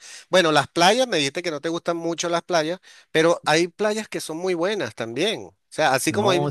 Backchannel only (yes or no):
yes